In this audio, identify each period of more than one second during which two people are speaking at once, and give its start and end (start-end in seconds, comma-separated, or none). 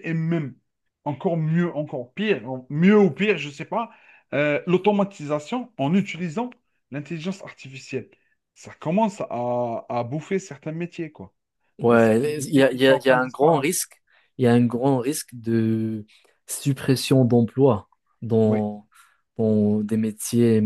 11.9-13.7